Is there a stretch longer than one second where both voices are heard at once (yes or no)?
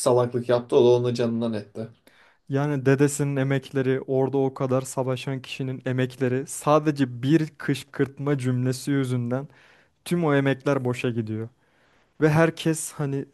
no